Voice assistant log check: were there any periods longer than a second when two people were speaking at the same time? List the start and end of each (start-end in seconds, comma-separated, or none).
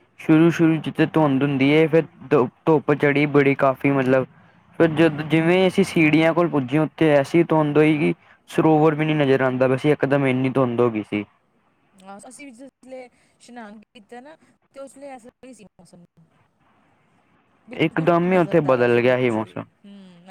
17.9-19.6